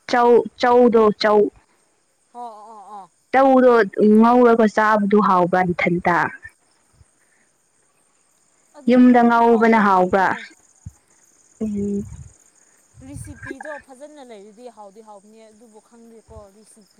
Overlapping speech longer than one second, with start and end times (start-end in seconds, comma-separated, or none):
8.9-10.2